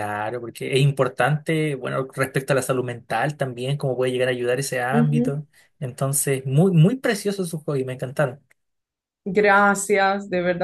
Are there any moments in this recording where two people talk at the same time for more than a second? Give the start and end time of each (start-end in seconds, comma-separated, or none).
none